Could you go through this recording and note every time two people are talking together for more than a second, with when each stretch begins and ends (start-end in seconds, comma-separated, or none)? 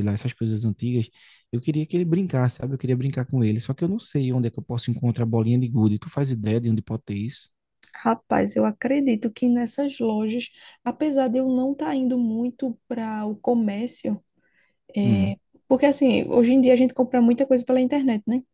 none